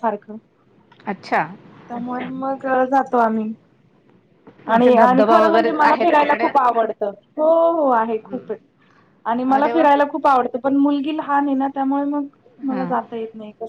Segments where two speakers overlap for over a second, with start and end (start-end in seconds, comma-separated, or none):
4.8-6.5